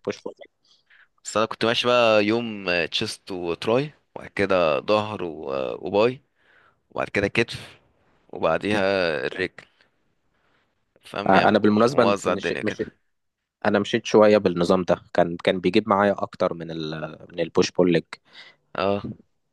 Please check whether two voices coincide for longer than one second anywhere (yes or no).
yes